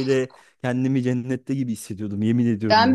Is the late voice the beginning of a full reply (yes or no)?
yes